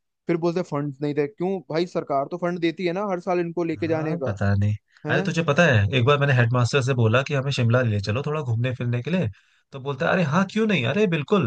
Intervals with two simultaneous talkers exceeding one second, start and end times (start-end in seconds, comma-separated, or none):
none